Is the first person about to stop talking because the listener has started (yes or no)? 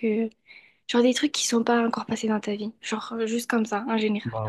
yes